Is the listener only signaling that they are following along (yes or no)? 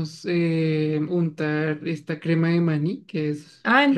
no